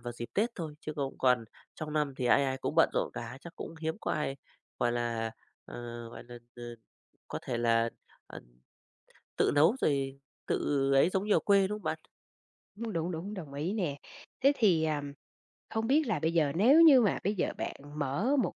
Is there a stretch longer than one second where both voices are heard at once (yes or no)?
no